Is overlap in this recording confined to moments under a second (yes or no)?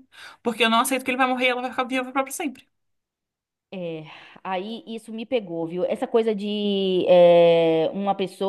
yes